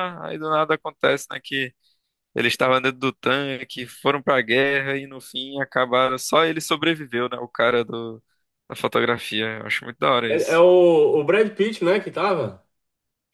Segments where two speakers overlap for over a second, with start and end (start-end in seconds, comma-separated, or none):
none